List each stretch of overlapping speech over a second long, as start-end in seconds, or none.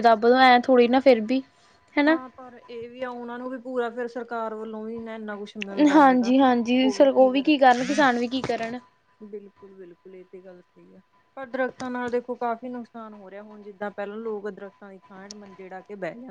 none